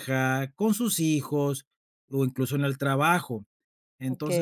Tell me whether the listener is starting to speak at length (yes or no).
no